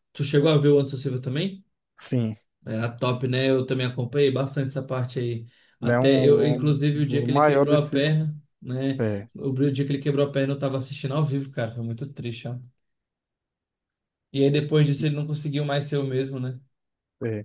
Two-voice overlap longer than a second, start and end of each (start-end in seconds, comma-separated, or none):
5.8-8.0